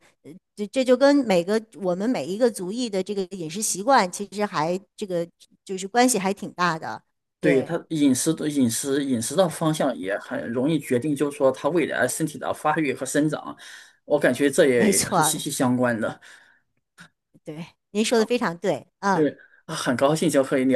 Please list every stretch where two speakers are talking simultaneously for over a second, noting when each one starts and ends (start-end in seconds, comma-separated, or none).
none